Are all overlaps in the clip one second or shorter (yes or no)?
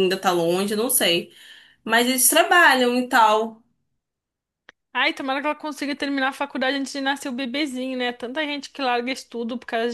yes